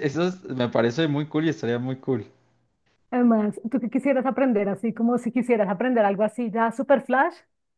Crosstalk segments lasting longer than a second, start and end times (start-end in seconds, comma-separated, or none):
none